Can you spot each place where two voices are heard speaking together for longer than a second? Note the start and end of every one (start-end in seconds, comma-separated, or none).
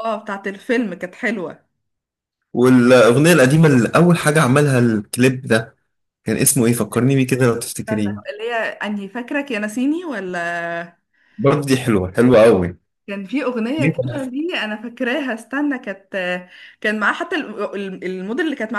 none